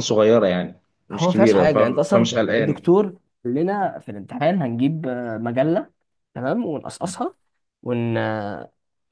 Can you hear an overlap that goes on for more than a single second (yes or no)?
yes